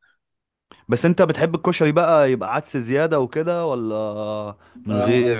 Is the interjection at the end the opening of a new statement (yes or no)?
yes